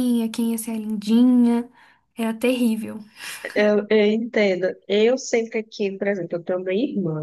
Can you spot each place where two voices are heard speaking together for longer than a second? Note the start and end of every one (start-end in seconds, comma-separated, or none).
none